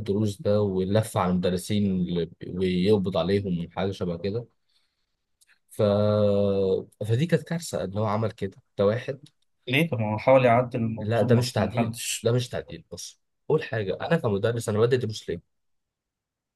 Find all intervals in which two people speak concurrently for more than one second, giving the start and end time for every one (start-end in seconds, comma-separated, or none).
11.0-12.3